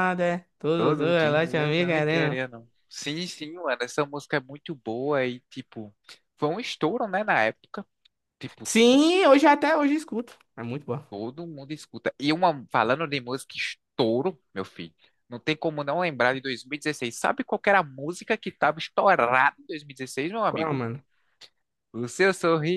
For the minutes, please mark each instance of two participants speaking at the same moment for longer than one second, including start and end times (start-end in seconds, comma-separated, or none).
0.8-2.4